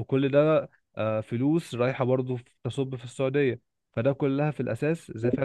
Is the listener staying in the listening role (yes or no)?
yes